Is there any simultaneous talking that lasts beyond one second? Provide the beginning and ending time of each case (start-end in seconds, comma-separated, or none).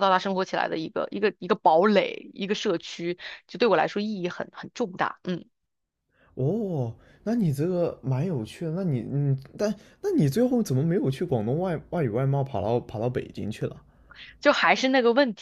none